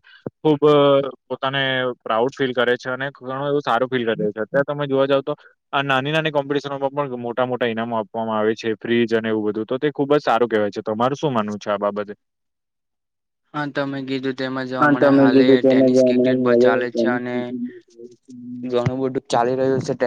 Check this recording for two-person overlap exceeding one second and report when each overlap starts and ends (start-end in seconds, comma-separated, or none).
14.8-17.1